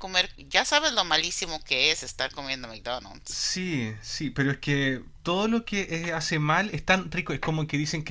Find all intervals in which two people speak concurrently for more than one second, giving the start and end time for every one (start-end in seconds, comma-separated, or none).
none